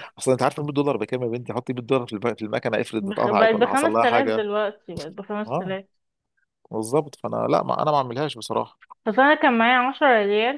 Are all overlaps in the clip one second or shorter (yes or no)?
no